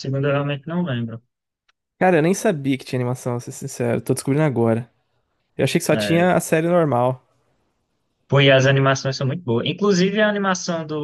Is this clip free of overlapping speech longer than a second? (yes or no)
yes